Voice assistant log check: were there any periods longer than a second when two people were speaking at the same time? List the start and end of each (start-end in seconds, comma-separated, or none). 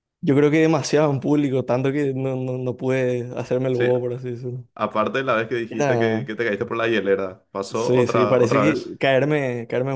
7.7-8.9